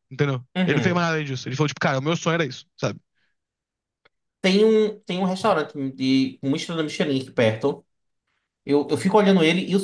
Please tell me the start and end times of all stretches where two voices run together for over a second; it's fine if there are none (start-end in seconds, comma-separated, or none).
none